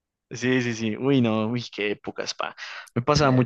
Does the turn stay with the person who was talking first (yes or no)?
yes